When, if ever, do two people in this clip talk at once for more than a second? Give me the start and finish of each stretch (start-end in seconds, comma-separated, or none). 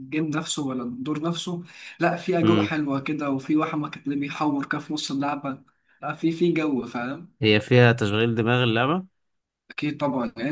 none